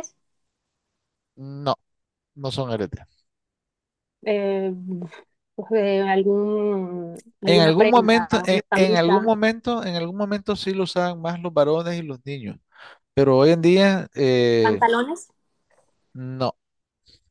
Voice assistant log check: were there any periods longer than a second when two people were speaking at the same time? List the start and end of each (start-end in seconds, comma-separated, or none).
7.5-9.3